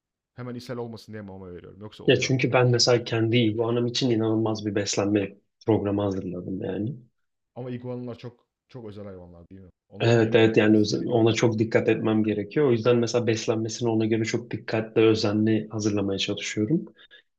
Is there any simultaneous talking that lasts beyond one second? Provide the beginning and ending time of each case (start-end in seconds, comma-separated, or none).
10.0-11.3